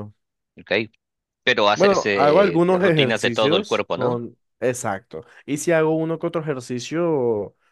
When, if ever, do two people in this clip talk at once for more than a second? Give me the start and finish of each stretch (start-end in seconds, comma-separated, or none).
1.7-4.2